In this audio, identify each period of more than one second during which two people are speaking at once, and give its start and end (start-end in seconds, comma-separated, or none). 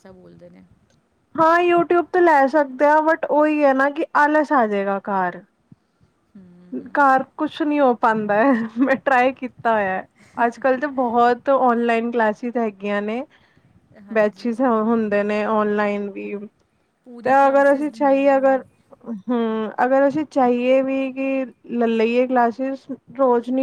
17.2-18.6